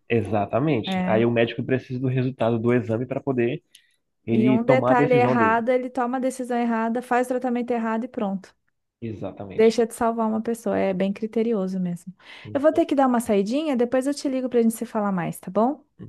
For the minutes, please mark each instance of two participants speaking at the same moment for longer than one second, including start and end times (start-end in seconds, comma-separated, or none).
4.3-5.6